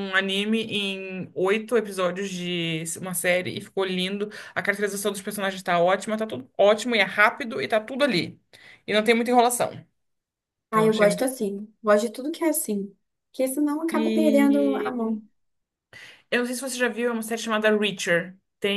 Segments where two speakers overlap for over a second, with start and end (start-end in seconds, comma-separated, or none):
13.9-15.2